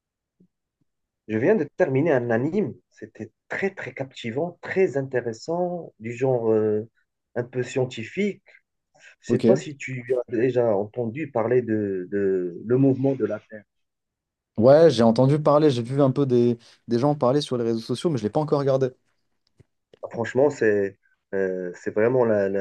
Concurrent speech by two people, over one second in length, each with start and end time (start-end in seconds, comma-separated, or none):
none